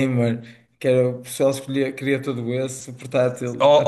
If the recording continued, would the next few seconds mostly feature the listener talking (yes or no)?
yes